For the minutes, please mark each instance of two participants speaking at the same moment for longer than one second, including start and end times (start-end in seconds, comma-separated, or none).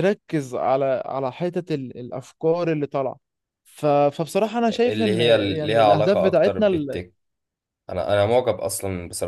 4.7-7.0